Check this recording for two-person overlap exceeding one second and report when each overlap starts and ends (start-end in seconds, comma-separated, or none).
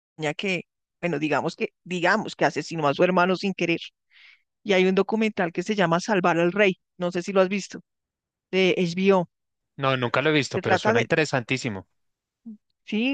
none